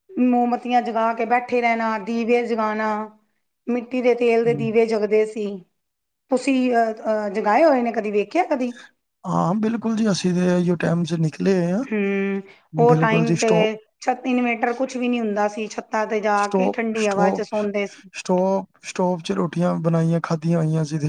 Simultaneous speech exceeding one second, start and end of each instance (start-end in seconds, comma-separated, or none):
none